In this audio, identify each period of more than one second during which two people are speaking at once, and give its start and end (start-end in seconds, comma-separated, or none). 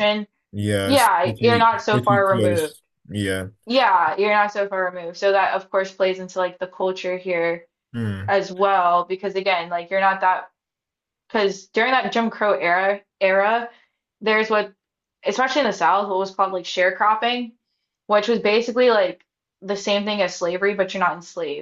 0.8-2.7